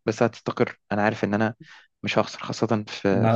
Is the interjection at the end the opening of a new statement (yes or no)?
yes